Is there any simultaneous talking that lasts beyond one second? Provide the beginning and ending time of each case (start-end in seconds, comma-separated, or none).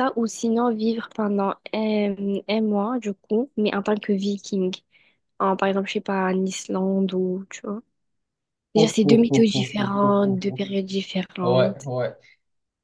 8.8-10.6